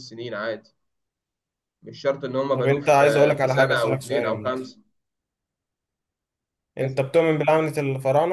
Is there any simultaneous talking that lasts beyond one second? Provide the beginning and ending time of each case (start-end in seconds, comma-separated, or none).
2.5-4.5